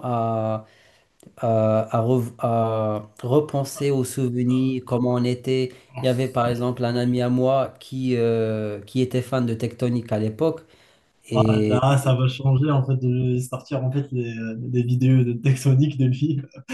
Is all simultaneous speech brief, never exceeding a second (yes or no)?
yes